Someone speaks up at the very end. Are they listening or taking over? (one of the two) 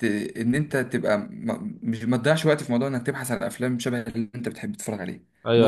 taking over